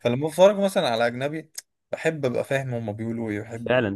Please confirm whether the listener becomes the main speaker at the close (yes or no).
yes